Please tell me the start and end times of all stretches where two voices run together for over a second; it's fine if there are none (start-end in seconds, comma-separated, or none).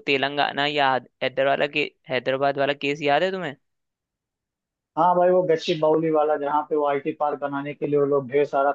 none